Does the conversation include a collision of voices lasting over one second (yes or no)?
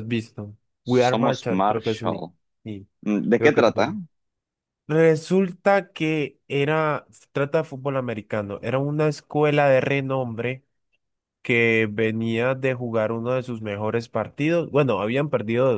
yes